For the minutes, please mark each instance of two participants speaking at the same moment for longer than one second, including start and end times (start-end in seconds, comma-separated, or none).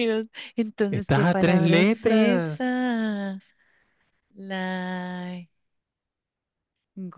0.9-2.8